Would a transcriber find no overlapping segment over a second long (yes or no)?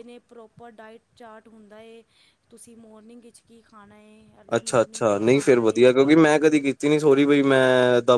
no